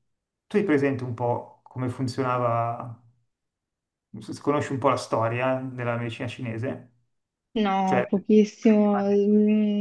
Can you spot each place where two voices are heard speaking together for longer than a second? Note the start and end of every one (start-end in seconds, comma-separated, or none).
7.8-9.2